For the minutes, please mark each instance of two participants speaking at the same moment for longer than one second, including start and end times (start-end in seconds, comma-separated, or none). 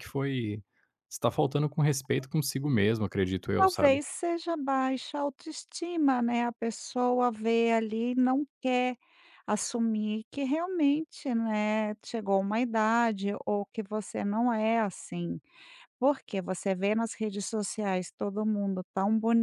none